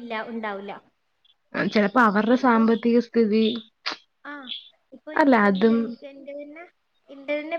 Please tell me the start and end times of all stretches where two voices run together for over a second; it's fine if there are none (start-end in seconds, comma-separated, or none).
none